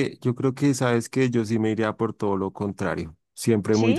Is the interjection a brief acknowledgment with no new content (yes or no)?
yes